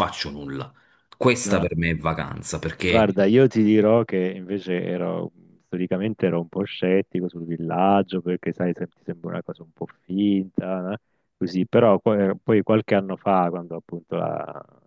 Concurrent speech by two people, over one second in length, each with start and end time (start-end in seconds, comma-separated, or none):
none